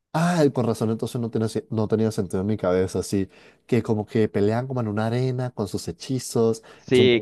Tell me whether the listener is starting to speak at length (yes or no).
yes